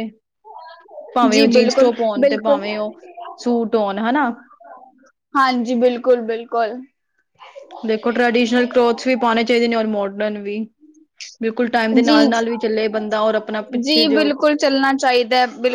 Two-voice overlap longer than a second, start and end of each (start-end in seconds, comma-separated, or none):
1.3-2.8